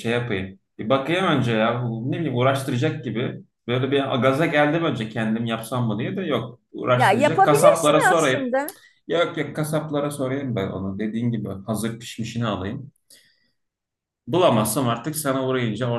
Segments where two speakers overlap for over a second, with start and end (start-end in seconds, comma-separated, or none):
6.9-8.4